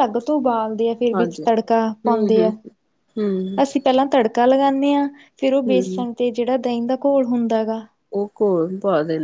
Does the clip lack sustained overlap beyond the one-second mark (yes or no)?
yes